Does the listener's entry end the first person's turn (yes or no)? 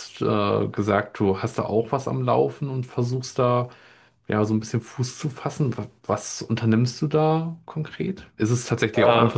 no